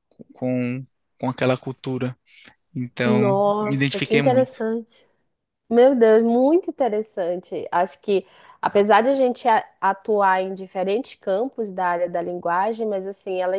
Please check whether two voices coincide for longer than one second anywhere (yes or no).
yes